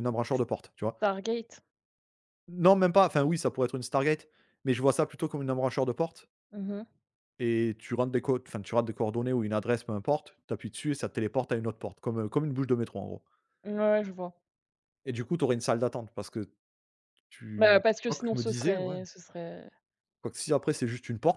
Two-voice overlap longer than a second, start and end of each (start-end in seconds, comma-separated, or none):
17.6-19.0